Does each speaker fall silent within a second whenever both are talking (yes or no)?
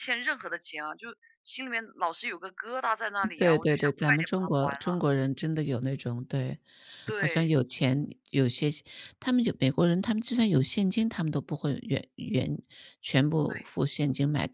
no